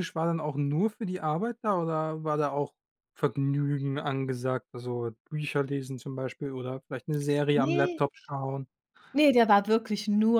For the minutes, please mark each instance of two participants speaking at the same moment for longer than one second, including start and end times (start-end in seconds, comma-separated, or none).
none